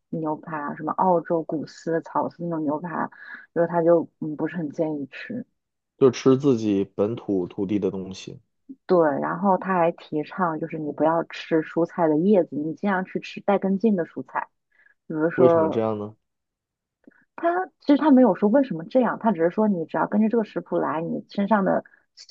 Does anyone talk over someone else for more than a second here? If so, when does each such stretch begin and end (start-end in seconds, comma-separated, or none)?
none